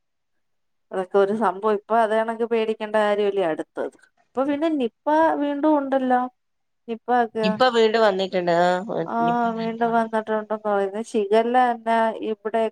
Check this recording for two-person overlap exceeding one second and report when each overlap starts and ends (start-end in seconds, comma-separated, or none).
none